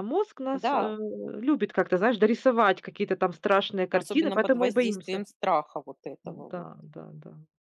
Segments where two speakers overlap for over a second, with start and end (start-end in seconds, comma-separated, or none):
3.9-5.2